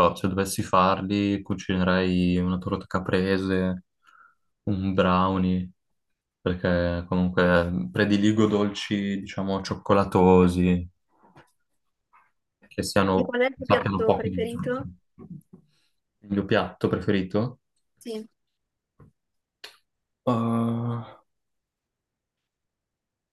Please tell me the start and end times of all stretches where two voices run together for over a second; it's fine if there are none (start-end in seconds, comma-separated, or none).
13.1-14.9